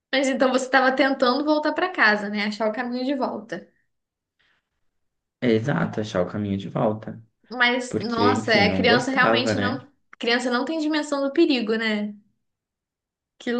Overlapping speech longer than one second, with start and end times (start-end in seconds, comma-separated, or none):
7.9-9.8